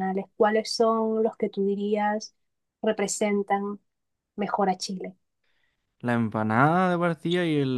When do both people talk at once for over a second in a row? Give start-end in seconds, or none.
none